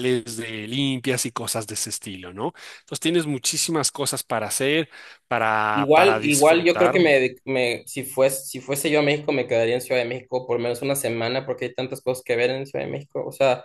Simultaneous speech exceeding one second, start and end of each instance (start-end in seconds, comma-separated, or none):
5.7-7.1